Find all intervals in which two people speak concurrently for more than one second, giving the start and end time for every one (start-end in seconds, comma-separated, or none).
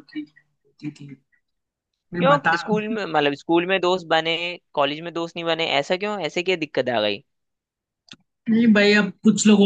none